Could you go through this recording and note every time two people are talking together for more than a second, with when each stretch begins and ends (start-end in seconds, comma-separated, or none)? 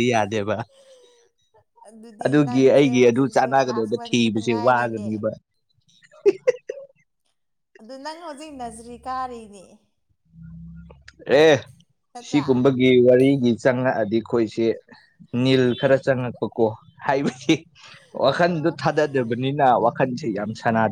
2.2-5.1